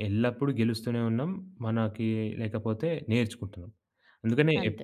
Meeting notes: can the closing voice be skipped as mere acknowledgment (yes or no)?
yes